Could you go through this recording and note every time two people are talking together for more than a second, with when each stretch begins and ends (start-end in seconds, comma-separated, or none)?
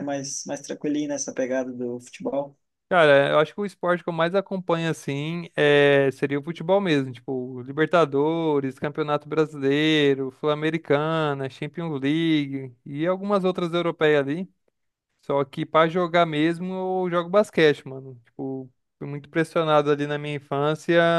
none